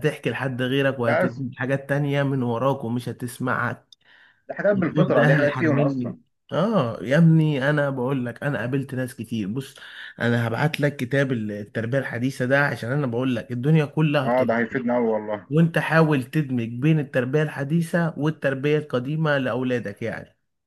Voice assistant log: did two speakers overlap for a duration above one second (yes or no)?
yes